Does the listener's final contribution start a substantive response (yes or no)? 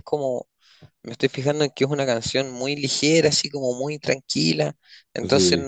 no